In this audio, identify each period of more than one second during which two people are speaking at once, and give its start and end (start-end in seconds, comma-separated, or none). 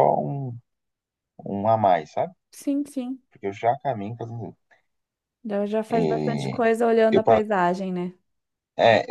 none